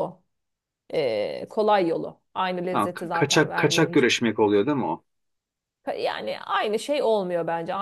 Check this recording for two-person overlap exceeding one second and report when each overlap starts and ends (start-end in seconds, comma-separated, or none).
2.7-4.3